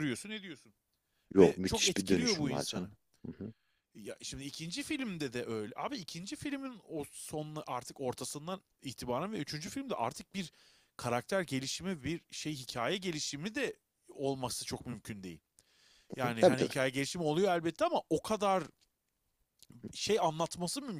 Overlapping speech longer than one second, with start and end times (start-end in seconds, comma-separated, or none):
1.4-2.9